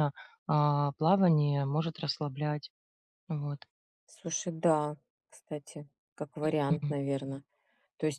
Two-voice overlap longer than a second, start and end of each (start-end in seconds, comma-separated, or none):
none